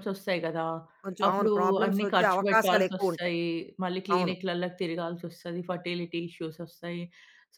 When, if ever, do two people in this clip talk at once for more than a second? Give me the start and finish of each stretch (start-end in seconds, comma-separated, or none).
1.2-3.3